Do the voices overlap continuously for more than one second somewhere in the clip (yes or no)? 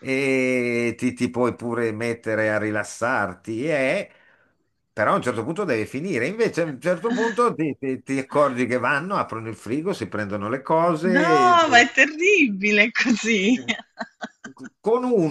no